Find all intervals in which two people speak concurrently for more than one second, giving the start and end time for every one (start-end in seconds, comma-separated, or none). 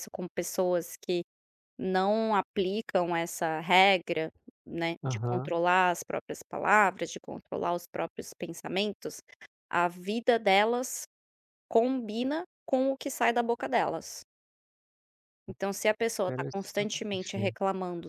16.2-17.6